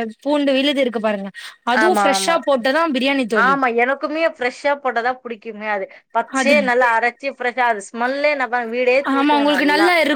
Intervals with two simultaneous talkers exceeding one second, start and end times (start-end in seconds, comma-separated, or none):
none